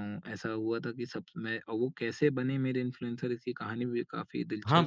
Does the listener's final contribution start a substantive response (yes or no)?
yes